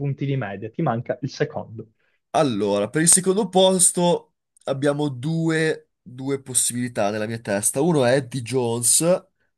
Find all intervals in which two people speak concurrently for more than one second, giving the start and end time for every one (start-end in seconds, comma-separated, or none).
none